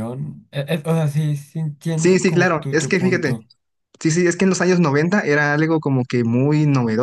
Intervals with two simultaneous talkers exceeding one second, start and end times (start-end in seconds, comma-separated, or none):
2.0-3.3